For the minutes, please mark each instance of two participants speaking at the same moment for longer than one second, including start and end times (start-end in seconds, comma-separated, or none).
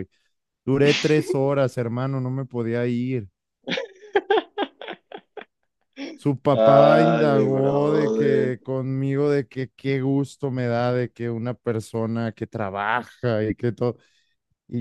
6.5-8.5